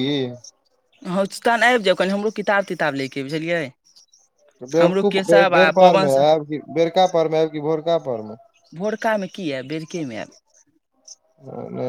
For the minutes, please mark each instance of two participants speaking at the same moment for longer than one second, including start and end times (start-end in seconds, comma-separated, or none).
4.8-6.2